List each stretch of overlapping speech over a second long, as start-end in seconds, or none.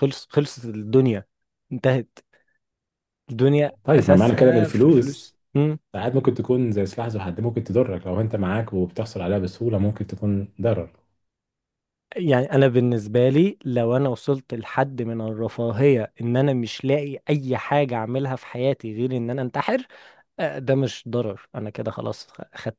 3.8-5.4